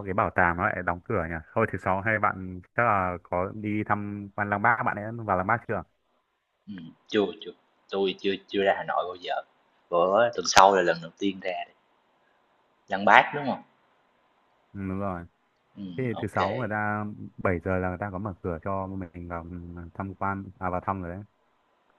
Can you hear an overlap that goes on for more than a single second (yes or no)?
no